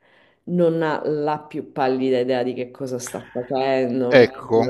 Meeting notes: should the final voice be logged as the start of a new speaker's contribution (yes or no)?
yes